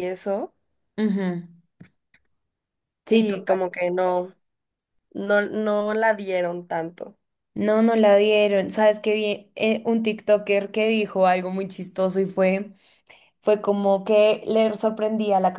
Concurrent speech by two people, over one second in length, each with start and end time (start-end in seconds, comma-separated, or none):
none